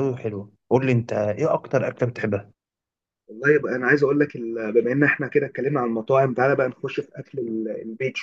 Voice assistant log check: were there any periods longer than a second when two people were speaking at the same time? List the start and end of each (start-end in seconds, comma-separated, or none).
none